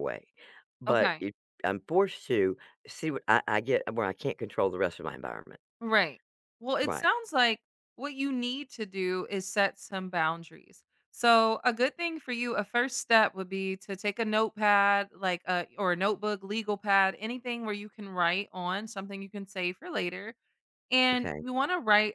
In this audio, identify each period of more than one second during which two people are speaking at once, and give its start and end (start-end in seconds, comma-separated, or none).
none